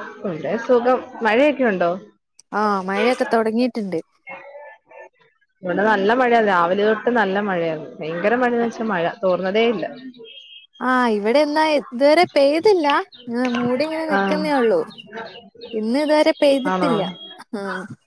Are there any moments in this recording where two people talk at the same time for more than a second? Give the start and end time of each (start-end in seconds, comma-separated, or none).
none